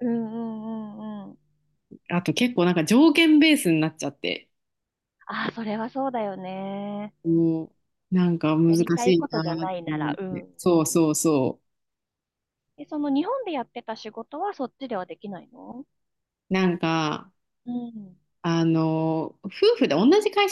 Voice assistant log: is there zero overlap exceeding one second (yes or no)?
no